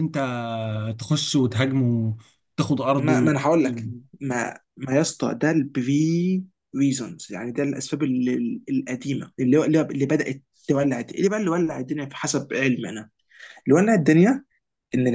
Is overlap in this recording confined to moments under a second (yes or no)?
yes